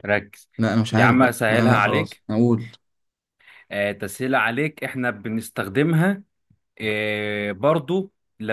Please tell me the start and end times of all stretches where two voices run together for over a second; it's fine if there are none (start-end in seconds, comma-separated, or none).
0.9-2.2